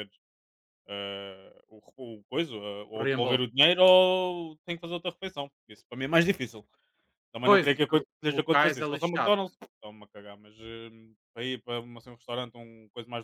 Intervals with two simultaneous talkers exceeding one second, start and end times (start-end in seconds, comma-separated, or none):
7.5-9.6